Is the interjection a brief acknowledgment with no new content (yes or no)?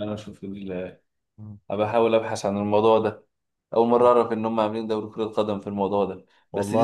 yes